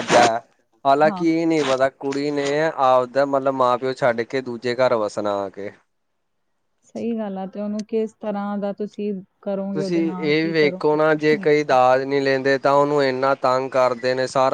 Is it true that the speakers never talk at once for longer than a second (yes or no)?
no